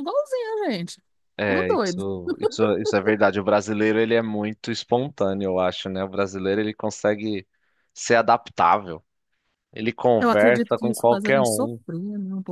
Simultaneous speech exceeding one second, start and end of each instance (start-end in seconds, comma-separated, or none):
10.2-11.8